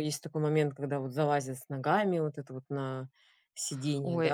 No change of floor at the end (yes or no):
no